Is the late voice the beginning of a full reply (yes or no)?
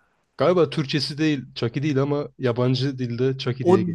yes